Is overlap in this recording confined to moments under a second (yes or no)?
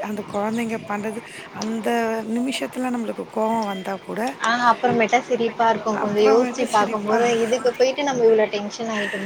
no